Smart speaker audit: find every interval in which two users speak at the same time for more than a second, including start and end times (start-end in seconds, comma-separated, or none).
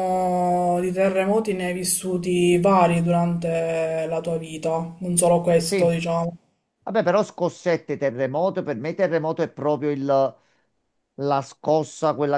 none